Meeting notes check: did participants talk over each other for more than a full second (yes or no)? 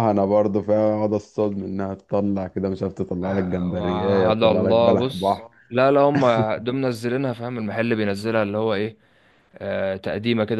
yes